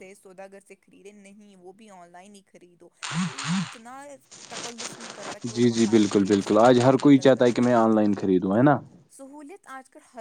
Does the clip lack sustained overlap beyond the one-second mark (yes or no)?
no